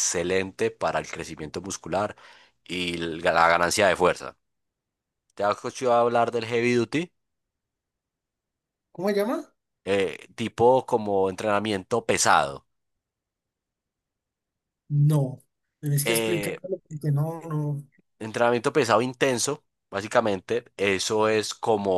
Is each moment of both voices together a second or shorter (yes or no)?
yes